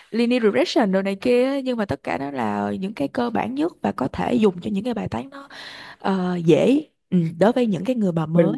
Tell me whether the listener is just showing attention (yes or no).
no